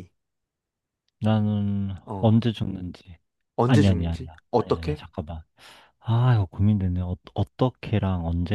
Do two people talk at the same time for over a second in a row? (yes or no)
yes